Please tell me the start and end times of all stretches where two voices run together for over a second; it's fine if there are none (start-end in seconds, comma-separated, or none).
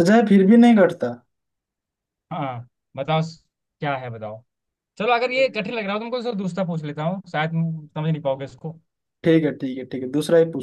none